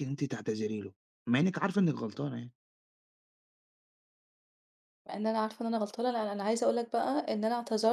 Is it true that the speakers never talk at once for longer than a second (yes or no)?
yes